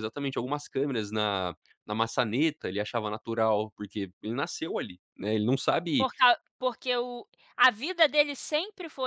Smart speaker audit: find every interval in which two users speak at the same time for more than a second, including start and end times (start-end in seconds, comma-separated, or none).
none